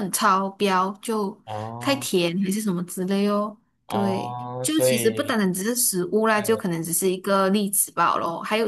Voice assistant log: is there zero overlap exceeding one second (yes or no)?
no